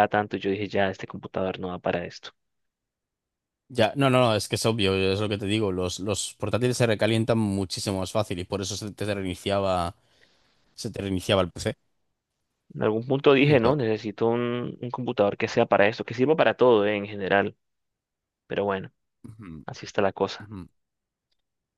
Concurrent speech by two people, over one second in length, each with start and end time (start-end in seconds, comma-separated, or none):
none